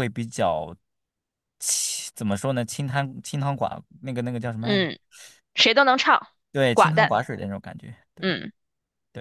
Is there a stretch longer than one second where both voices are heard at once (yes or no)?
no